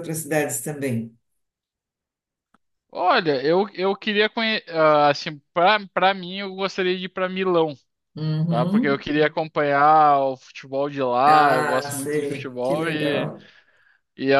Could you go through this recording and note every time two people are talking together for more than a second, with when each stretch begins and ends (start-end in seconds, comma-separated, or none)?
11.2-13.3